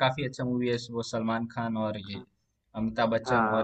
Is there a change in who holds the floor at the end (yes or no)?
yes